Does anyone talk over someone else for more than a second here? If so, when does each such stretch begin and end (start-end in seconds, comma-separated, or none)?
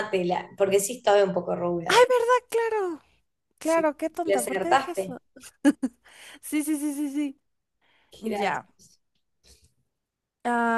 3.6-5.2